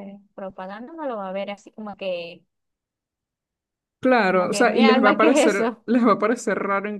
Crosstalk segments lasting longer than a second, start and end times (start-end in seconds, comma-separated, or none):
4.3-5.8